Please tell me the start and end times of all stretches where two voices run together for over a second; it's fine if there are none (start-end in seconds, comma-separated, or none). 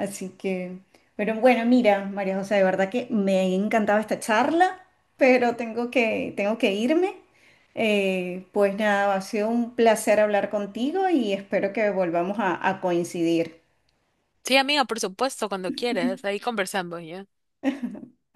none